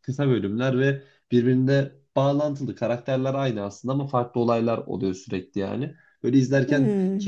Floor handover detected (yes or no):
no